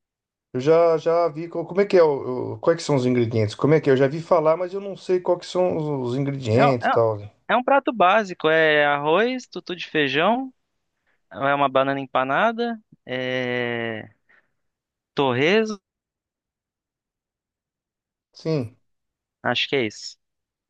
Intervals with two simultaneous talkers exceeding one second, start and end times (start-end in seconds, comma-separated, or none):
none